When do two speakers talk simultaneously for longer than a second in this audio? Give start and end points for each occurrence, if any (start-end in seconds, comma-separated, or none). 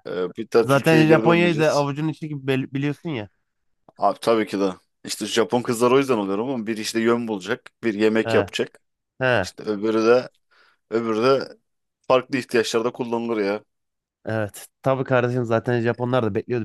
0.6-1.9